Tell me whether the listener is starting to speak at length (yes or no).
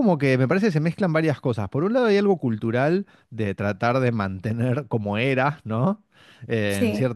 no